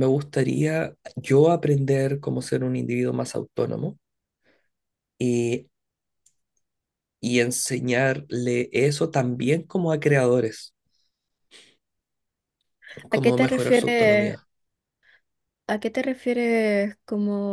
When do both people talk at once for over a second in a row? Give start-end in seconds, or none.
13.1-14.4